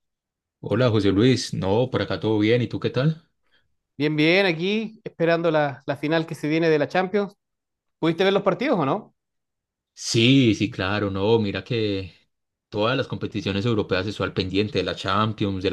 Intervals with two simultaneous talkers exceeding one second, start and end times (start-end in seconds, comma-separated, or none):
none